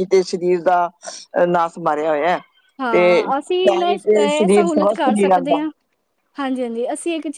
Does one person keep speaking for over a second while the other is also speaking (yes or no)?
yes